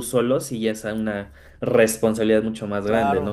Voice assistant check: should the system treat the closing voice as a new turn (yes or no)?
yes